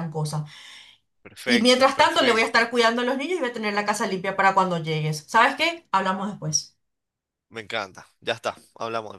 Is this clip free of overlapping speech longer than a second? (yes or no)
no